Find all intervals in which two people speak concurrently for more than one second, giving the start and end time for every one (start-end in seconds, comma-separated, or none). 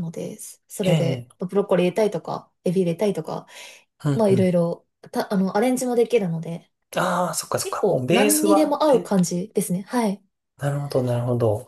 7.6-9.1